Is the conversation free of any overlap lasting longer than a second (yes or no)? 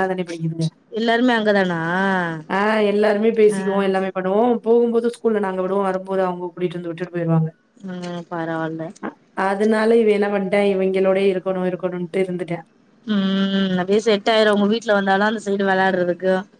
yes